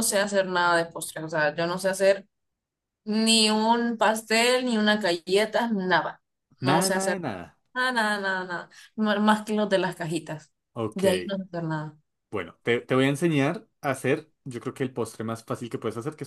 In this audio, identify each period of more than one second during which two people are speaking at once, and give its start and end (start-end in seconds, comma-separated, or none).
none